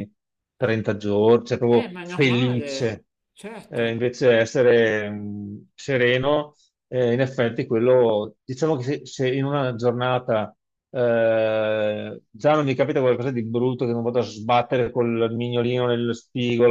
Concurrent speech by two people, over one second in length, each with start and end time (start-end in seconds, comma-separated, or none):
1.7-3.0